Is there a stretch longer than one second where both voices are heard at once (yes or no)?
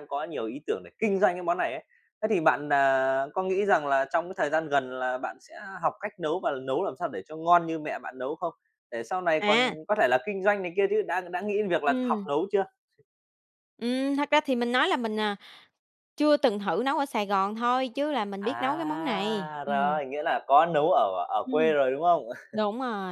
yes